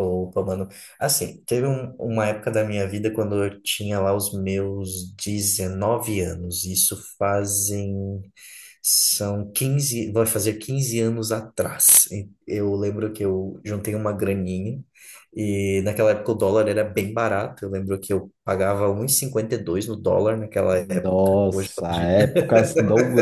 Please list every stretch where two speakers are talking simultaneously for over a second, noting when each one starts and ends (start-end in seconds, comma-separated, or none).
20.8-22.3